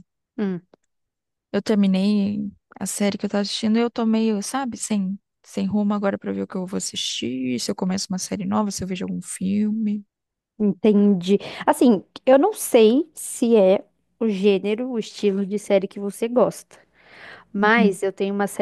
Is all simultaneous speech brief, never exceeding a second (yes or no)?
yes